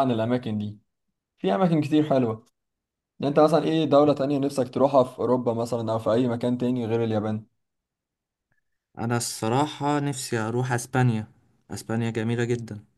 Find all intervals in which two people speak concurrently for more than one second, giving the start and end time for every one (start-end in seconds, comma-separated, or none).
none